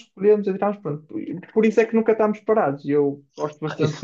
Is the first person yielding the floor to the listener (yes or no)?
yes